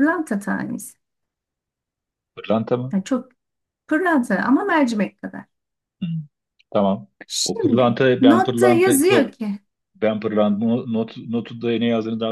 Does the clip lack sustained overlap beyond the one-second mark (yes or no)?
no